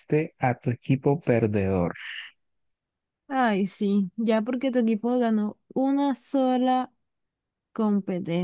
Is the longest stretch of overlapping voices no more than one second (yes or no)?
yes